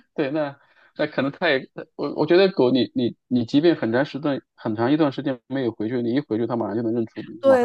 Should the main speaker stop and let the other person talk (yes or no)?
yes